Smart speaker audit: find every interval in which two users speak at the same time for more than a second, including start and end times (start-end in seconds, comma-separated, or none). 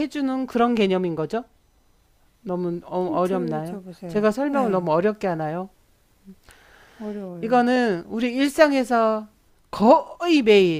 3.0-4.9